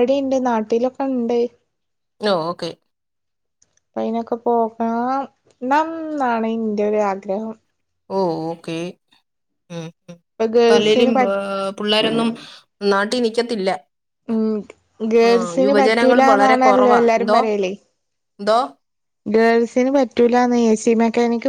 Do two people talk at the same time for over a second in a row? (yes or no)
yes